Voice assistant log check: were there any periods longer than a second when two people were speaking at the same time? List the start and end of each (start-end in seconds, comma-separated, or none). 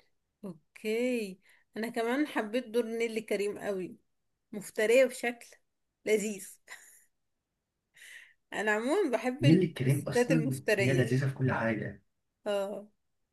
9.4-11.2